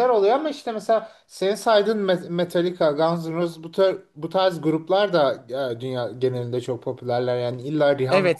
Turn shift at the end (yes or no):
yes